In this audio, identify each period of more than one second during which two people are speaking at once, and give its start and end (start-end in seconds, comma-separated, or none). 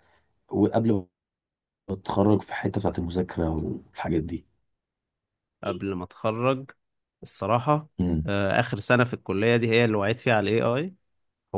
none